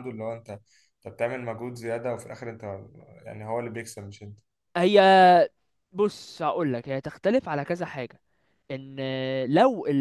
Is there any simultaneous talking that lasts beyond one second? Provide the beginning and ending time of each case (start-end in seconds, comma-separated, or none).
none